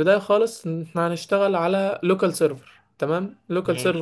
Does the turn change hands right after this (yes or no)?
no